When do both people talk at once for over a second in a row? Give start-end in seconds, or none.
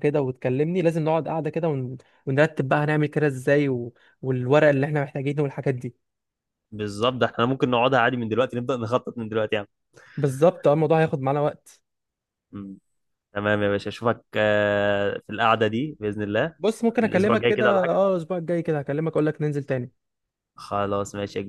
16.6-18.0